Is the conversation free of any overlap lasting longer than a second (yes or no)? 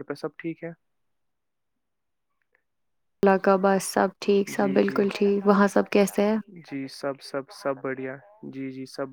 no